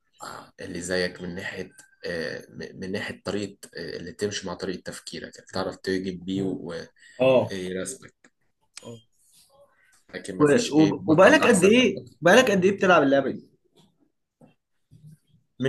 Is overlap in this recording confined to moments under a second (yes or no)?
no